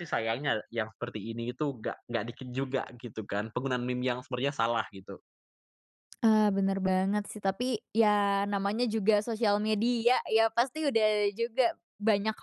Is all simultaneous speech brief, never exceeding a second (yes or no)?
yes